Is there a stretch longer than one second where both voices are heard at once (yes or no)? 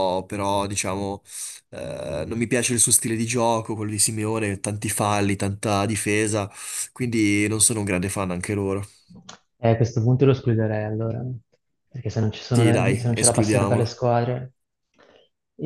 yes